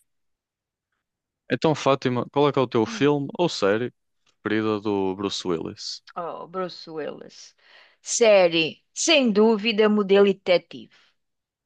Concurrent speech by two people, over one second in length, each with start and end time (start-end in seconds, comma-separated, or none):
none